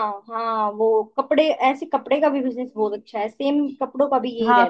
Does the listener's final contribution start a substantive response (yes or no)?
yes